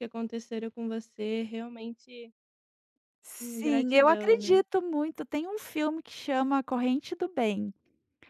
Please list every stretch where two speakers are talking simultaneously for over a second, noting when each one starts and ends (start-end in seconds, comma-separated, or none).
3.4-4.6